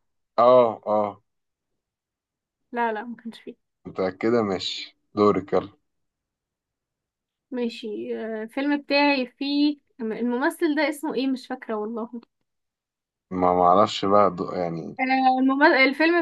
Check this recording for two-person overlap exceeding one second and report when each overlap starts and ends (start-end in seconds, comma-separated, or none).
none